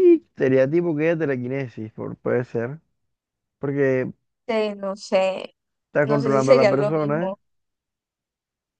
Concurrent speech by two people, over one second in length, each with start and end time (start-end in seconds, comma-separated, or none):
6.0-7.3